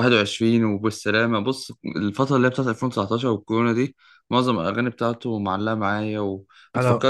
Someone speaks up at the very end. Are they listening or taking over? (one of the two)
listening